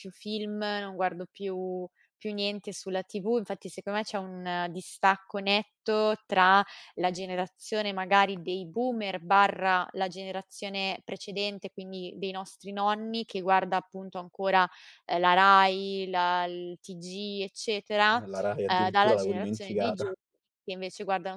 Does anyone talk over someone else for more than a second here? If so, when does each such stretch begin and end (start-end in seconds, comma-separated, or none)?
18.6-20.1